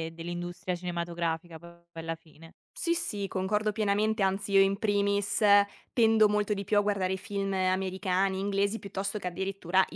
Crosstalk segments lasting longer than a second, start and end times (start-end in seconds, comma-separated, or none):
none